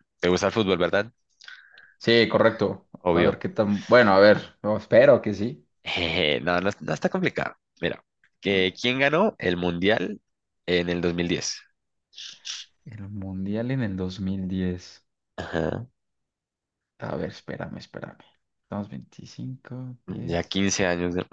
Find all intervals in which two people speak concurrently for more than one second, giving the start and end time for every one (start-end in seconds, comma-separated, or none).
none